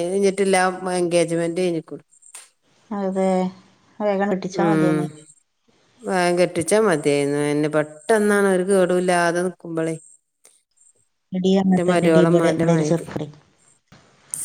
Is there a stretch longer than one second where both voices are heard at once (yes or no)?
yes